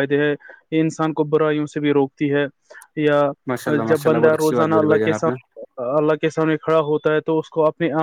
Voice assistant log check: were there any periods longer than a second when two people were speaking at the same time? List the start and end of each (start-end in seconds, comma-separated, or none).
3.9-5.3